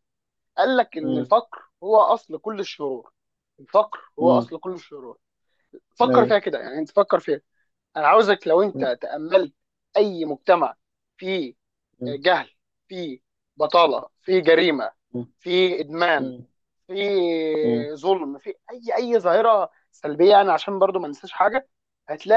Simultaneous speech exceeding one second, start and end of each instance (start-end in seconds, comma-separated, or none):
none